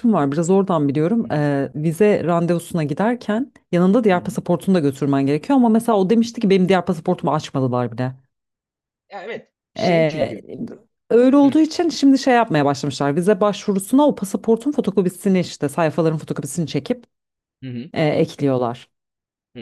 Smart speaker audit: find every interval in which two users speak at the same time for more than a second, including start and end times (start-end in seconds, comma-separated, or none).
none